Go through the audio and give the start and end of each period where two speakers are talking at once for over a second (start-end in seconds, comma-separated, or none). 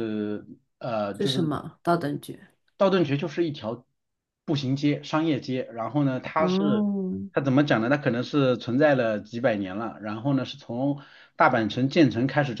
none